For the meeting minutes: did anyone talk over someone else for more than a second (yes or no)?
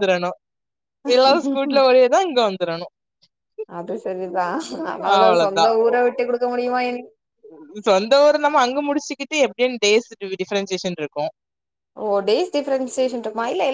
no